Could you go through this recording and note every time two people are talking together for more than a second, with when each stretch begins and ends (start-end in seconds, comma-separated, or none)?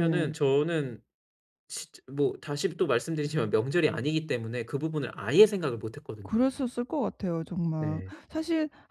none